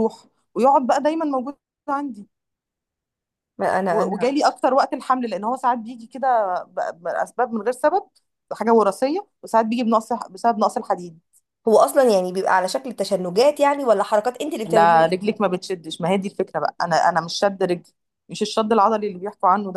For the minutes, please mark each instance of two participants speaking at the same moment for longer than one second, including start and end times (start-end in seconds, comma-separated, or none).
none